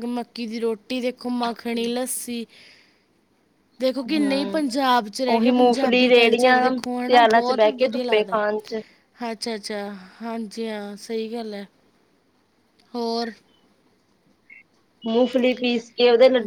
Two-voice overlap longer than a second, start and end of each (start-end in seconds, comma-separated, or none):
5.3-8.4